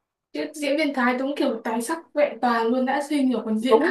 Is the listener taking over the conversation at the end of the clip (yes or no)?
yes